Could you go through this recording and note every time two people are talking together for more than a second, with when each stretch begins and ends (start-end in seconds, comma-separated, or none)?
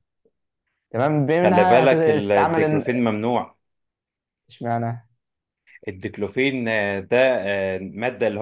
1.4-2.8